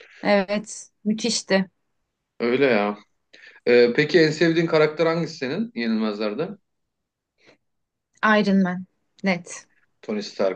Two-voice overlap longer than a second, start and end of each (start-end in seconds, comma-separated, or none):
none